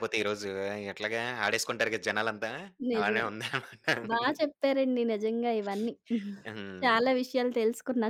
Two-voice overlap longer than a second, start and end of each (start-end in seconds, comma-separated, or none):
none